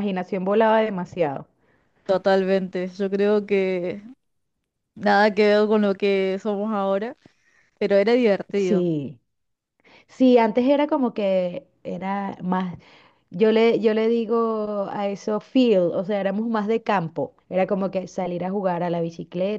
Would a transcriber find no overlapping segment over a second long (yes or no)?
yes